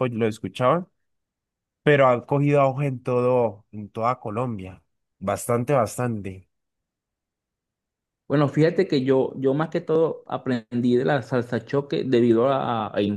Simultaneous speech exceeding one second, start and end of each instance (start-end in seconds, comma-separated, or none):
none